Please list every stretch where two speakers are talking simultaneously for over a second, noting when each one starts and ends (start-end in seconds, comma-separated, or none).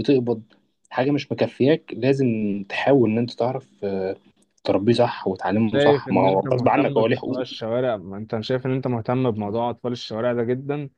5.7-7.5